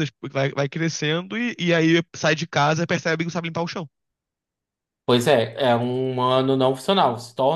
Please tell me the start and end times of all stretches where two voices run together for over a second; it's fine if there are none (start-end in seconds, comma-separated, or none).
none